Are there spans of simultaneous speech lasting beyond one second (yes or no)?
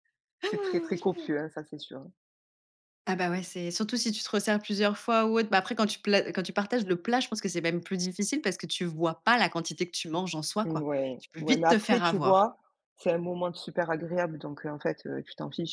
yes